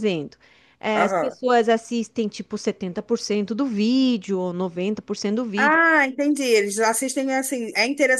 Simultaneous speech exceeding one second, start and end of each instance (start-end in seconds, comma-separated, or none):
none